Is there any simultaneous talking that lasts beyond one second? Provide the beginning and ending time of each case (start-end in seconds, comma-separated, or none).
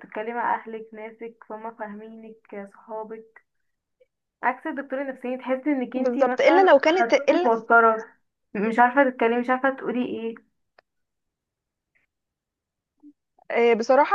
5.9-7.5